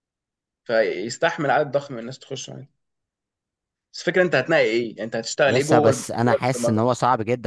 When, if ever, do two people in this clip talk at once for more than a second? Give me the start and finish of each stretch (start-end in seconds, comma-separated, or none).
5.5-6.9